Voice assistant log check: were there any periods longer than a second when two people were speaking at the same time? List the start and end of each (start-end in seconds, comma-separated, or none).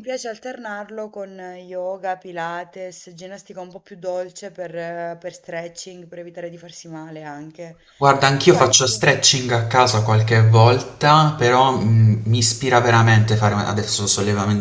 none